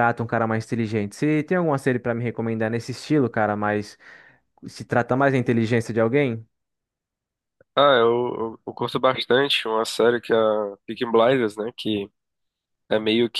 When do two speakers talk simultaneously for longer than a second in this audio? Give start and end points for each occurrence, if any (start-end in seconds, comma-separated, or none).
none